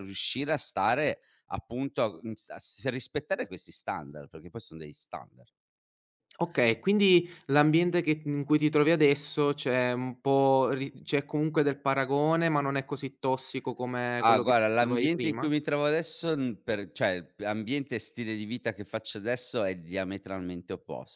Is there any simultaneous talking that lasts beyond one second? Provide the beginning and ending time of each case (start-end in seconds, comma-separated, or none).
14.2-15.5